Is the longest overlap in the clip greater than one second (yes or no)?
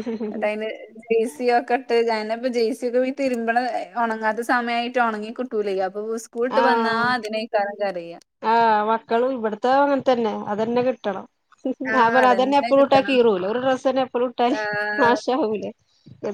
no